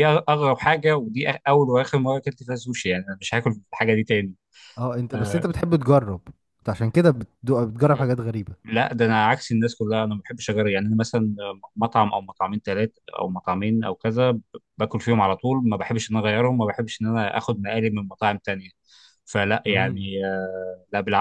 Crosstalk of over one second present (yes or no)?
no